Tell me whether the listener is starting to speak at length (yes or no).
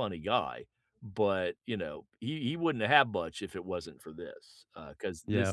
yes